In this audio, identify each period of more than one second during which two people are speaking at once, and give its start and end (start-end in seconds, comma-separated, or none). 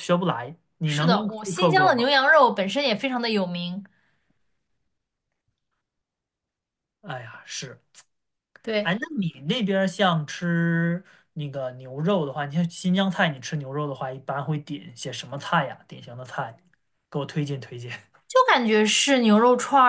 0.8-2.1